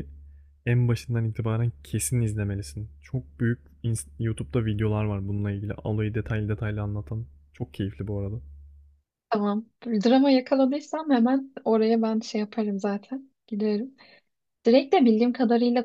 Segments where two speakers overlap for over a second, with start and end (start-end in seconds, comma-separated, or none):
none